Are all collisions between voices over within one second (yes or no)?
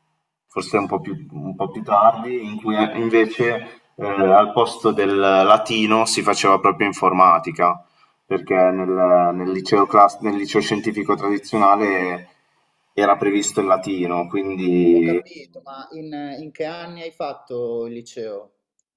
yes